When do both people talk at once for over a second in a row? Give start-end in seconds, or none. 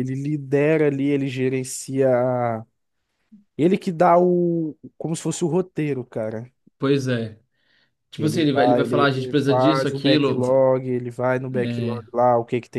8.2-10.6